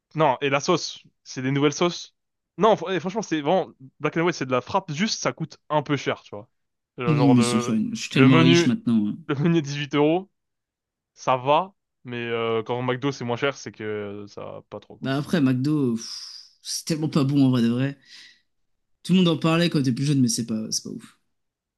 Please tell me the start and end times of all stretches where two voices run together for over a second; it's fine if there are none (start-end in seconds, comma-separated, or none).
7.1-8.7